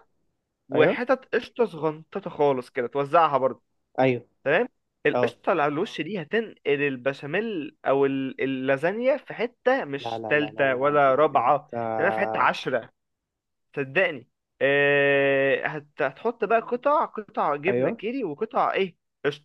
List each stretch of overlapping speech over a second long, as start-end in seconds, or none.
10.0-11.7